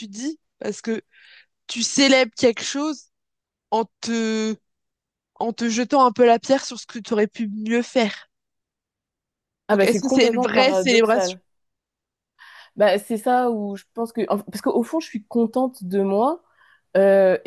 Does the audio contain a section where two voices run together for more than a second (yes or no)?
yes